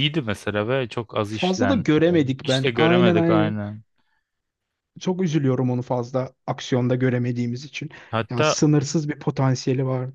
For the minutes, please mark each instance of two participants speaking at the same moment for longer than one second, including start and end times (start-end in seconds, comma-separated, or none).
1.3-3.5